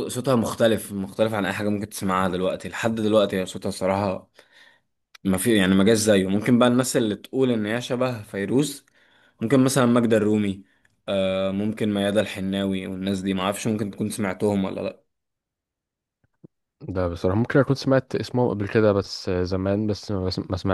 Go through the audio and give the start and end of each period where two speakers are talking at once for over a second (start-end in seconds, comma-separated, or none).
none